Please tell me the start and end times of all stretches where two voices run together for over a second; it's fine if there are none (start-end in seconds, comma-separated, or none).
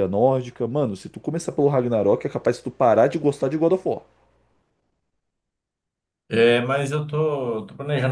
none